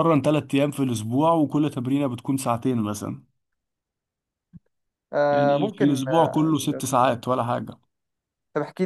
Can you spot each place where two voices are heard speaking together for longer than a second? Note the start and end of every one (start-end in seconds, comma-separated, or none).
5.3-6.8